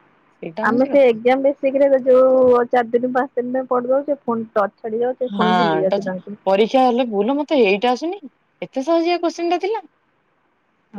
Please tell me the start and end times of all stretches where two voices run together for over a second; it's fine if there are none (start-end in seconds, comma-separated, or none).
none